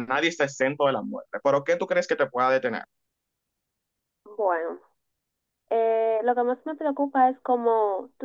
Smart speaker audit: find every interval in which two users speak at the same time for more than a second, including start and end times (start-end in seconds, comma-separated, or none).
none